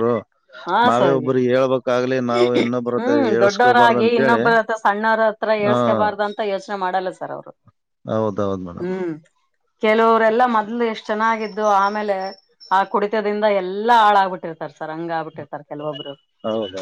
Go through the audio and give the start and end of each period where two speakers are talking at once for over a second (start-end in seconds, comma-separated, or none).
3.0-4.4